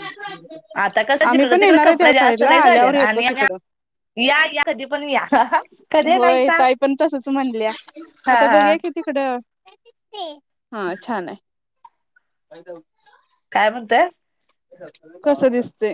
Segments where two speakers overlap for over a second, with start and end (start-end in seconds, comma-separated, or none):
1.3-3.6